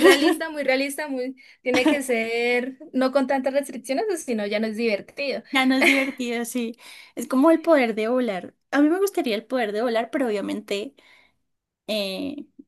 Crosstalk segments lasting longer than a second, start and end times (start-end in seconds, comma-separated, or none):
none